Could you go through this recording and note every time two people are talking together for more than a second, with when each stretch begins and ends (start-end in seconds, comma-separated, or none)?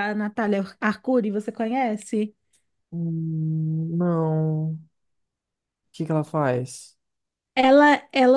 none